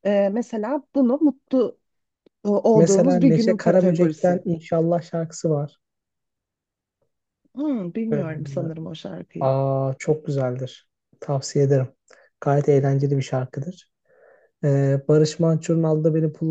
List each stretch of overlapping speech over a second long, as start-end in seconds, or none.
2.8-4.4